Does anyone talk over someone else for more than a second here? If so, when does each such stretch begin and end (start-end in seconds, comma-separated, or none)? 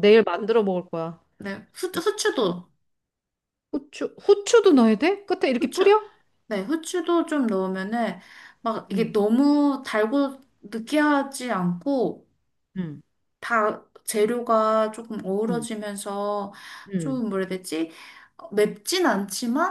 none